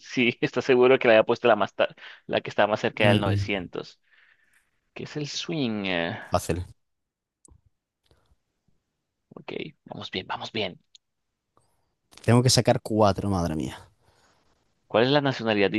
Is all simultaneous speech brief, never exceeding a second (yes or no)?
yes